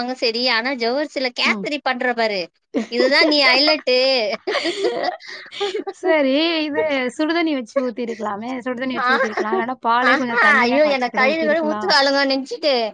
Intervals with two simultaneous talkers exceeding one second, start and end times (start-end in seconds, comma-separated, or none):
10.1-11.9